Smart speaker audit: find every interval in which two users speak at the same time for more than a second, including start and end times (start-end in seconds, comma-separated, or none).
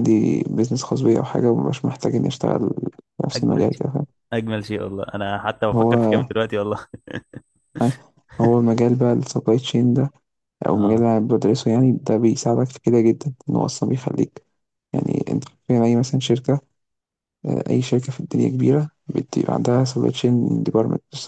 none